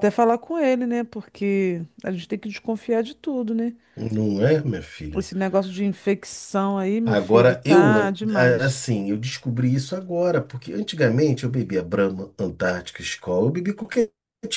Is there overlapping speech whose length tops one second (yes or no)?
yes